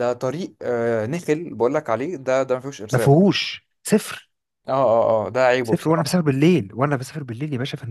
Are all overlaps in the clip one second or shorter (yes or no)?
yes